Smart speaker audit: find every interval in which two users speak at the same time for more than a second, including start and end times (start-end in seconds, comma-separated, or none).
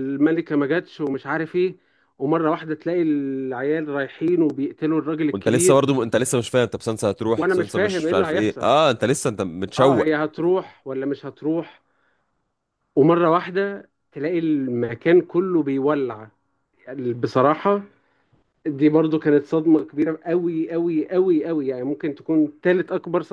7.3-8.7